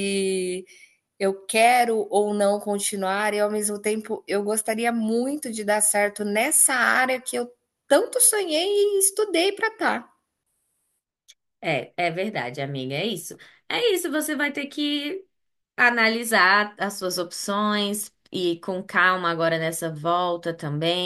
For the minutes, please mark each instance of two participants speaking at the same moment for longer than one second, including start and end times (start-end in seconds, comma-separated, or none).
none